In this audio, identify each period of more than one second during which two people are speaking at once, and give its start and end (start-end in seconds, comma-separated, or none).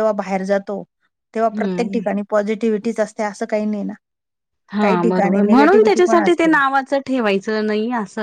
4.8-6.5